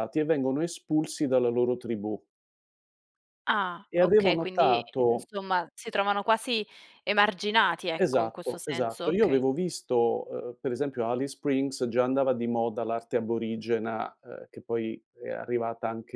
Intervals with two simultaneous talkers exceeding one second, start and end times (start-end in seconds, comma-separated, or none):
3.9-5.3, 8.0-9.4